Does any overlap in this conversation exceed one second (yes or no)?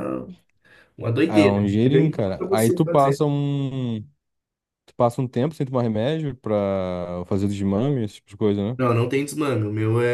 yes